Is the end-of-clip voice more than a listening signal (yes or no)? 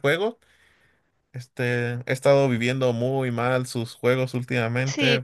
yes